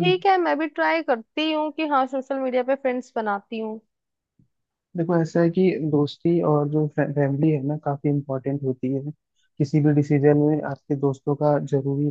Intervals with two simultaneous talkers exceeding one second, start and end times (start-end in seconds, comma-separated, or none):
none